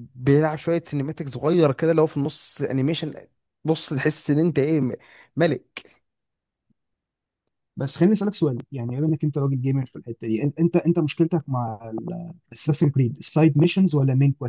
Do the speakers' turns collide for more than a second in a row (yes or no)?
no